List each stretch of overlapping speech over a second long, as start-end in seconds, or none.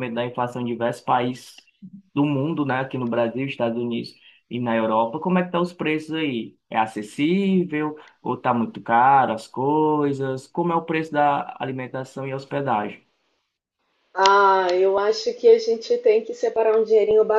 none